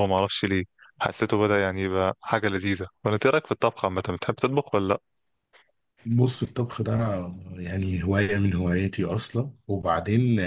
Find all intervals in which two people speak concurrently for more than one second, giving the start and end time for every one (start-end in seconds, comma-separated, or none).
none